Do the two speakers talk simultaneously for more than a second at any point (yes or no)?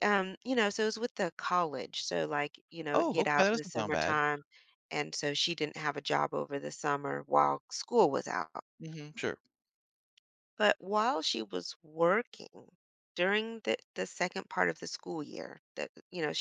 yes